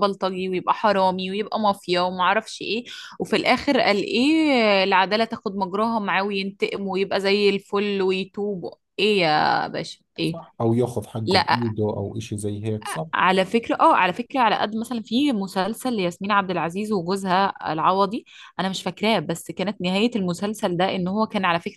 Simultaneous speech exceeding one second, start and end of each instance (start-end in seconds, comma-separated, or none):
none